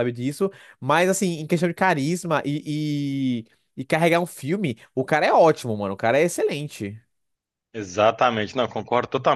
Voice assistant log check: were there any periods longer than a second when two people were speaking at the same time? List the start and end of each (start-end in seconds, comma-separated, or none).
none